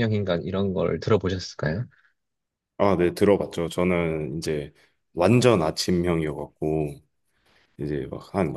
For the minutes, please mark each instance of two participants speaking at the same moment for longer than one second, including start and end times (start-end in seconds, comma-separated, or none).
none